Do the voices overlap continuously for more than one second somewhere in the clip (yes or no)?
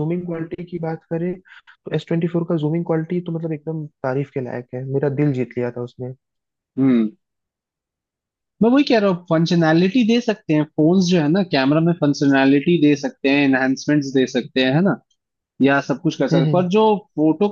no